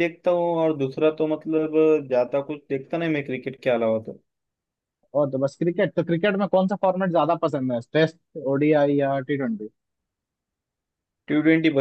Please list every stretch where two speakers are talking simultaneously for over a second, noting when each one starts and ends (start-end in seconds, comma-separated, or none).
none